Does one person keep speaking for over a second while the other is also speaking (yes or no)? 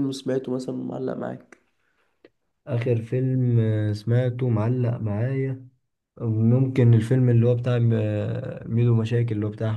no